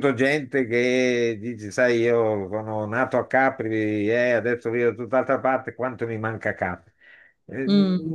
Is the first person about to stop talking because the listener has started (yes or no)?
no